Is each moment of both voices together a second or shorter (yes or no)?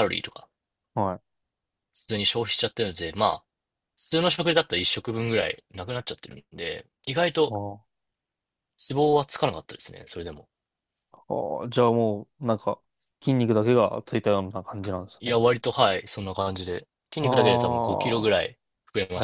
no